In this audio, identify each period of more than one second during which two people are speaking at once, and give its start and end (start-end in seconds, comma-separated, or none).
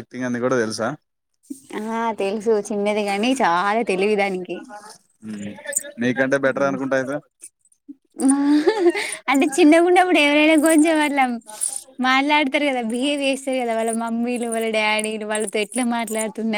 none